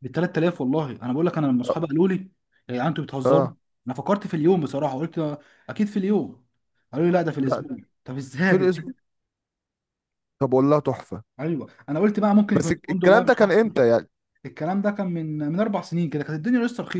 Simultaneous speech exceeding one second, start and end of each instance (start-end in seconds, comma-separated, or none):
12.5-13.8